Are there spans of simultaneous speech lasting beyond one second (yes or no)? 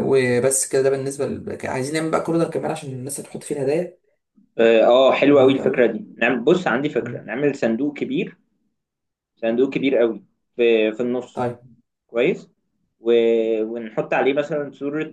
no